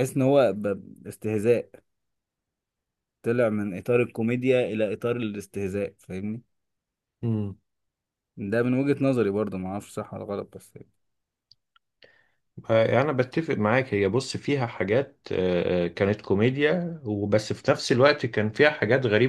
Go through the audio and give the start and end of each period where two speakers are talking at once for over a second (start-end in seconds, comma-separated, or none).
none